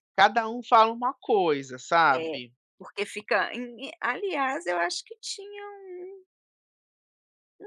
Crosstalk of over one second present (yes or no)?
no